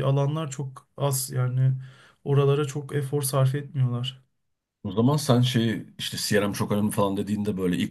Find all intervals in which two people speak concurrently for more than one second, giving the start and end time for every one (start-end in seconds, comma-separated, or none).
none